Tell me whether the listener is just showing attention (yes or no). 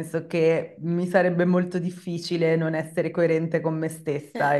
yes